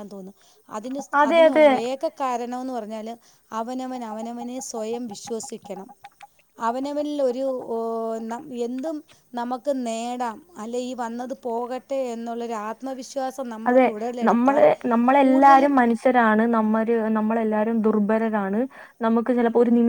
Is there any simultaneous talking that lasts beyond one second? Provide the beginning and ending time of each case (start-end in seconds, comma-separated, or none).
none